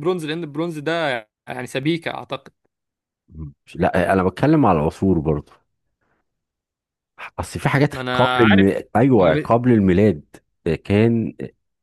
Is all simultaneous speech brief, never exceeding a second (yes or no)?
no